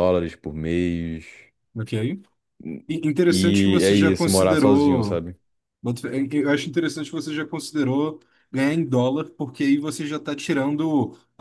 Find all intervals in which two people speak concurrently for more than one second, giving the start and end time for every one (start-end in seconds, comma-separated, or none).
3.3-5.2